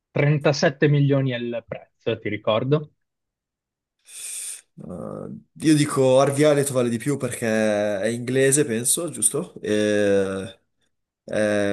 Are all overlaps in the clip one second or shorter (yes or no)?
yes